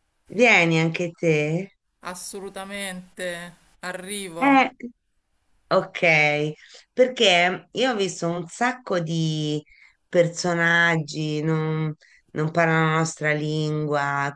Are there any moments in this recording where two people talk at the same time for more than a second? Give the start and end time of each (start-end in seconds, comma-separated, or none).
none